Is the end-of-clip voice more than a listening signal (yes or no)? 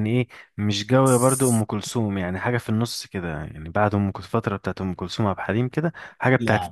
no